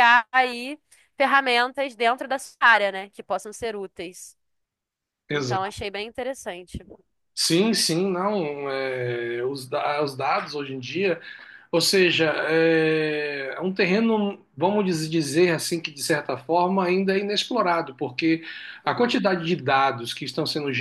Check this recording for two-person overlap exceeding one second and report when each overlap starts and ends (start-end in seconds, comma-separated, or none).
none